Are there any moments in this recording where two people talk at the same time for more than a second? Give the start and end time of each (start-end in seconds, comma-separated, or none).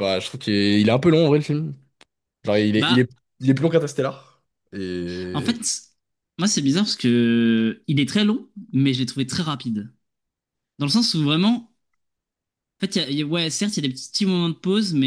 none